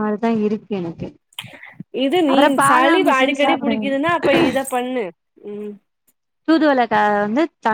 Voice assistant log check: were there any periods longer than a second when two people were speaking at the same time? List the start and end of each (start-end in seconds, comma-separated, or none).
2.3-3.9